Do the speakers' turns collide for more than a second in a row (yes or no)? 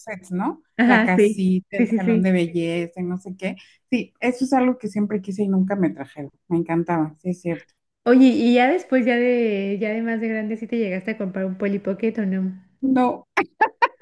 yes